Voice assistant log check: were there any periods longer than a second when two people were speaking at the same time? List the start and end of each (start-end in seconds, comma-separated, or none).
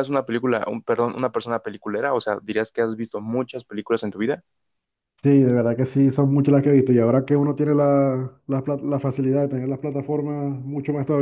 none